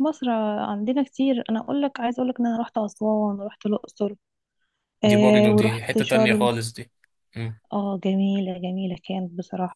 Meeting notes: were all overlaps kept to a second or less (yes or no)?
no